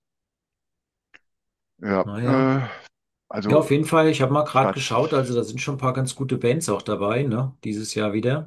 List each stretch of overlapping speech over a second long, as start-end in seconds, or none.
none